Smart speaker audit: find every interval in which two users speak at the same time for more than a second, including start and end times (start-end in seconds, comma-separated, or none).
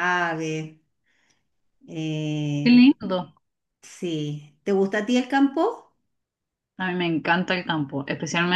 none